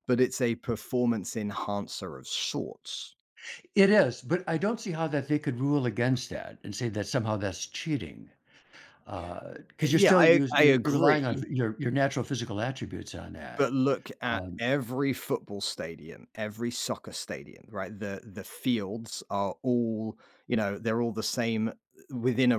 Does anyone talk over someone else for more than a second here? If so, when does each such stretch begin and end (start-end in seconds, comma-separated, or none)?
9.8-11.4